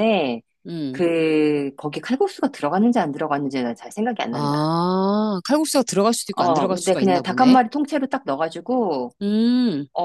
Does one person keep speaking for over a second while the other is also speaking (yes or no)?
yes